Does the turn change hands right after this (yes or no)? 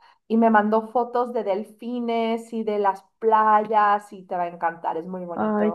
yes